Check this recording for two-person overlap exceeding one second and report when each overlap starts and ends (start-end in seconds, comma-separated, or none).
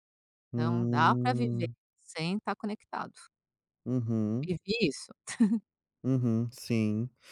0.5-1.8